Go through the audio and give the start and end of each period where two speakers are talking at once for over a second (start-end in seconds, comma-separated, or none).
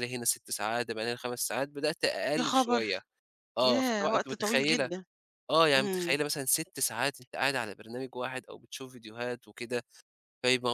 3.6-4.9